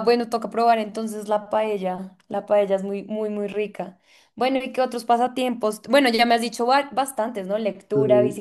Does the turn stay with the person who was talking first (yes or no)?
yes